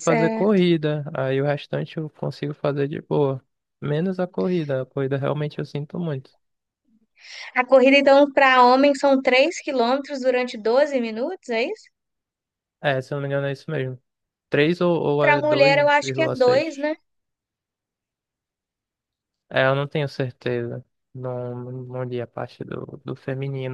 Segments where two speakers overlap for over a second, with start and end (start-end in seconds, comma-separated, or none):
15.2-16.7